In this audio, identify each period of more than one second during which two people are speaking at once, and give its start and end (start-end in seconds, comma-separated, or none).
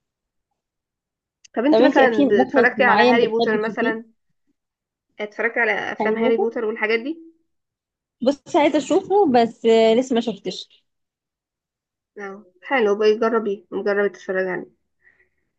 1.7-3.9